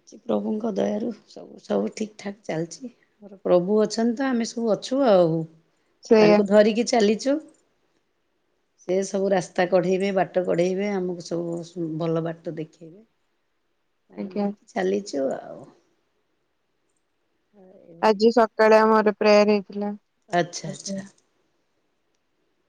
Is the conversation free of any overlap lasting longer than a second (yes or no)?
yes